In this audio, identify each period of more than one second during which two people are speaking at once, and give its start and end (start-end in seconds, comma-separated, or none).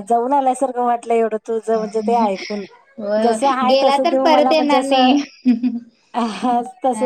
3.2-5.1